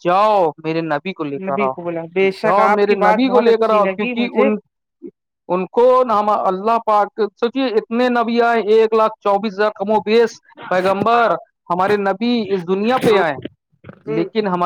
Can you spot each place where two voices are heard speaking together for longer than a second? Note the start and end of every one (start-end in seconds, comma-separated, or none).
2.4-4.5